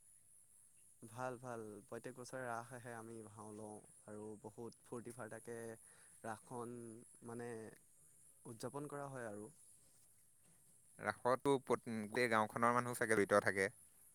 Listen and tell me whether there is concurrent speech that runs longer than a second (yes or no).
no